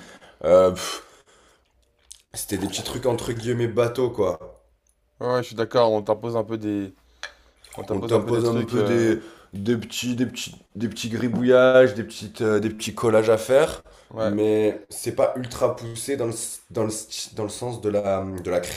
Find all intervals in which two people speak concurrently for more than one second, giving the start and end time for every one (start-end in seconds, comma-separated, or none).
7.9-9.2